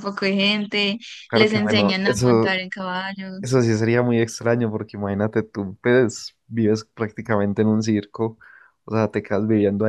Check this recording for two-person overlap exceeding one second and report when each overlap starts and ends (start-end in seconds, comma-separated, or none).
1.3-2.5